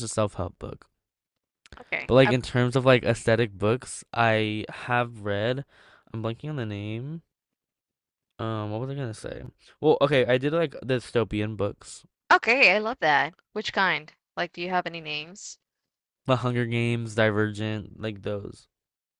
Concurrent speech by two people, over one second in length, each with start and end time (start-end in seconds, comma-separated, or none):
none